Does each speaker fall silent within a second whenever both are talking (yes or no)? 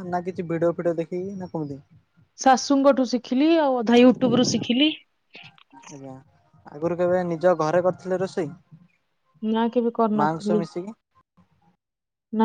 yes